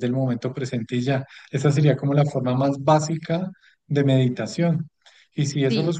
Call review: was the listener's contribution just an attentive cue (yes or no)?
yes